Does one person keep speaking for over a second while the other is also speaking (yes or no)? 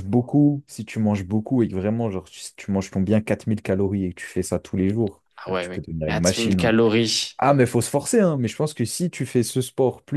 yes